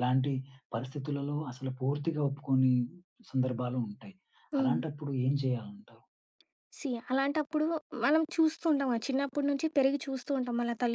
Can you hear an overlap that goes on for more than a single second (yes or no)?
no